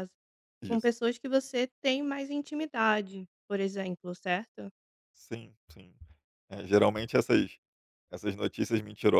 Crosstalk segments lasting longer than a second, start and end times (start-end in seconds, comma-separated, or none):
none